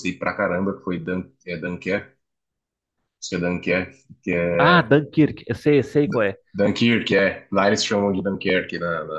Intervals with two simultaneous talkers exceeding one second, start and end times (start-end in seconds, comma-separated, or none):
none